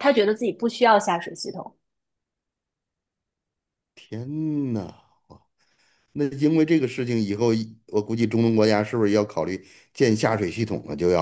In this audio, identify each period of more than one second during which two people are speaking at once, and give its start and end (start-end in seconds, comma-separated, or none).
none